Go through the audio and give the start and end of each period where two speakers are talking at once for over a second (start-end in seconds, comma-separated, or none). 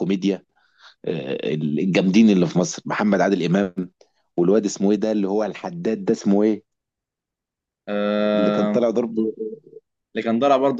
none